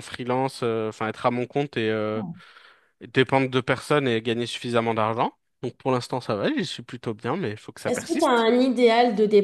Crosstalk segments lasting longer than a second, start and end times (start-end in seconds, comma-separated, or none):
none